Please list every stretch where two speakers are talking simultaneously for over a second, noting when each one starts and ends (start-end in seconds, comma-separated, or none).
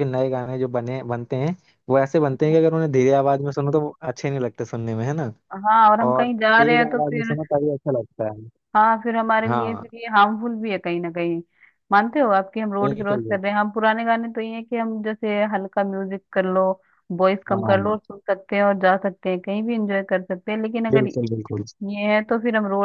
6.1-7.3